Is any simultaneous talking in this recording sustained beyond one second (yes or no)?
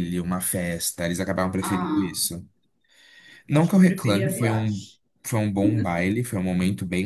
yes